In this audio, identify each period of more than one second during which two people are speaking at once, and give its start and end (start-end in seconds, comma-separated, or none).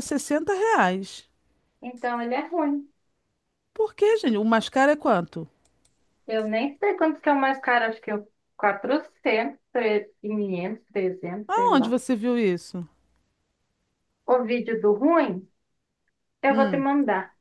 none